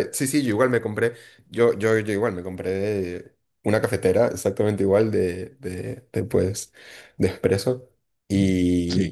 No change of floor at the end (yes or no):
yes